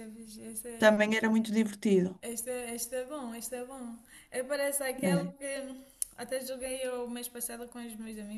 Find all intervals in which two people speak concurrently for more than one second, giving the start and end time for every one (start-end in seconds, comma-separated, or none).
none